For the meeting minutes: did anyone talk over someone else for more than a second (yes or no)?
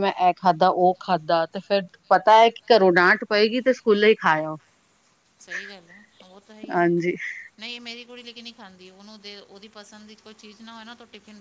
no